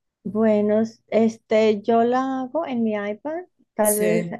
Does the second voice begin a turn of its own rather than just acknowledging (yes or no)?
no